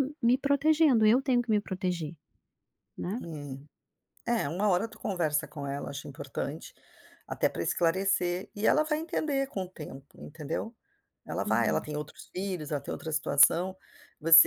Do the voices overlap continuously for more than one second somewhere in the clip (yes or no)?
no